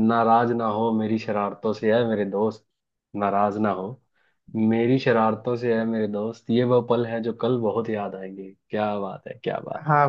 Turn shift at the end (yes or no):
yes